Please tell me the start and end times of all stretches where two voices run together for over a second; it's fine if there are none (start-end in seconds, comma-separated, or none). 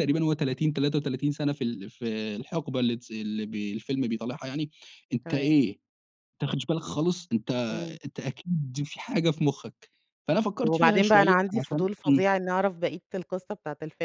10.6-12.3